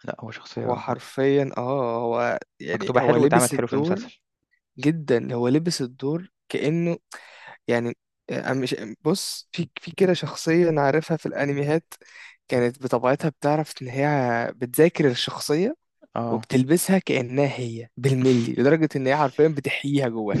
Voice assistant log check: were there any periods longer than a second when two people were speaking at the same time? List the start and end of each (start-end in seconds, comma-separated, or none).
2.8-4.0